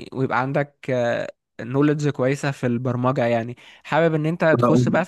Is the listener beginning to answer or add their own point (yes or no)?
no